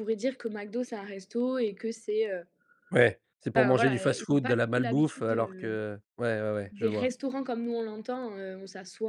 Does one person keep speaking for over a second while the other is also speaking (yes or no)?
yes